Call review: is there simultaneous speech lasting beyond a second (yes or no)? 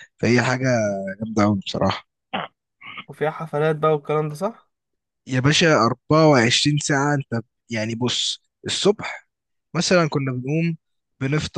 no